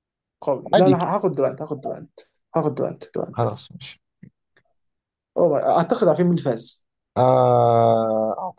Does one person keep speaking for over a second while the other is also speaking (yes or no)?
no